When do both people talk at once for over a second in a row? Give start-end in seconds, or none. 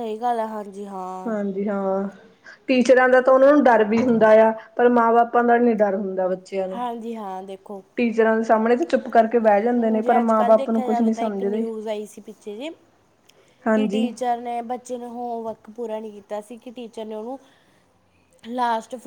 9.8-11.7